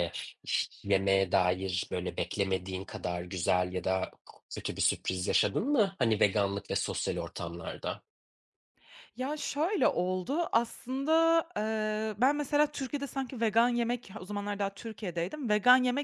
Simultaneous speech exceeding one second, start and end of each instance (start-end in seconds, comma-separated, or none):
none